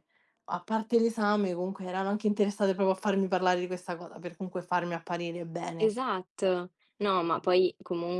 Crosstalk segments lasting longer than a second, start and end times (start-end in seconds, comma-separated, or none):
none